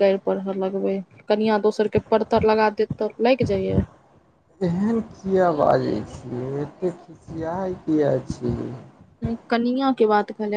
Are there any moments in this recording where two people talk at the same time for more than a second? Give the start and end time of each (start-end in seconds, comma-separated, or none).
none